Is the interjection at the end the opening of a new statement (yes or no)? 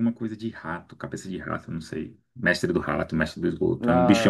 no